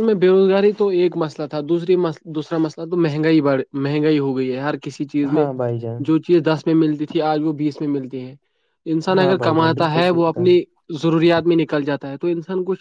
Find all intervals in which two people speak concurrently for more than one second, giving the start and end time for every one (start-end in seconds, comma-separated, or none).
9.1-10.6